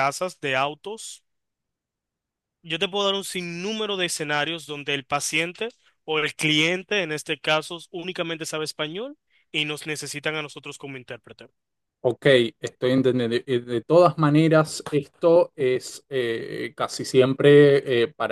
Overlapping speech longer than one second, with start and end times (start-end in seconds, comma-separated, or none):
none